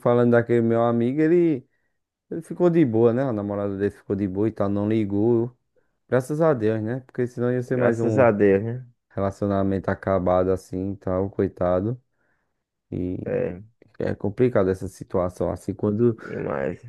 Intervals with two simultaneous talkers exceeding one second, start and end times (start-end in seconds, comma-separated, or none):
none